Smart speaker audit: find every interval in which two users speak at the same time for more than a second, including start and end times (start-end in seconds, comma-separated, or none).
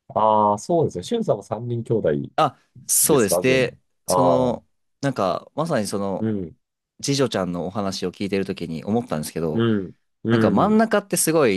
3.0-4.6